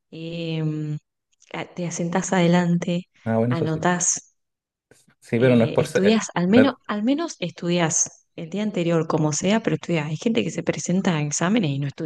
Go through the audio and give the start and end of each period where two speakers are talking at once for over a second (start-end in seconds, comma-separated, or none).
5.4-6.7